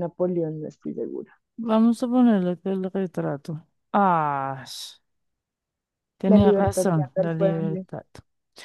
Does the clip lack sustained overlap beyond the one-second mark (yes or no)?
no